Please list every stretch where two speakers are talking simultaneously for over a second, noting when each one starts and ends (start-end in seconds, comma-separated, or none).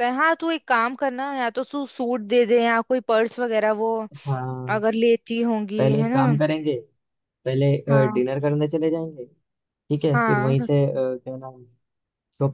none